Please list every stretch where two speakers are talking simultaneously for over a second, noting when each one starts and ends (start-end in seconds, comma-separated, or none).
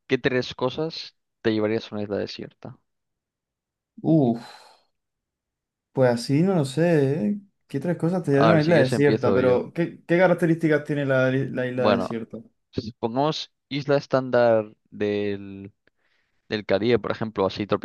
8.3-9.6